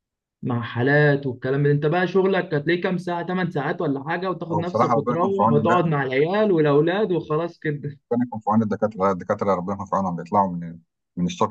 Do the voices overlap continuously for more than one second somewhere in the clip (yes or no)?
yes